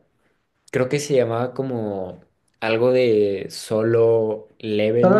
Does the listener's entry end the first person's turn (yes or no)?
no